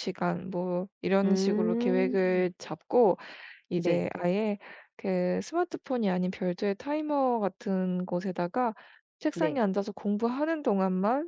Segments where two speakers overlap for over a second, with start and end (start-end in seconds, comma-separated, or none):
1.2-2.5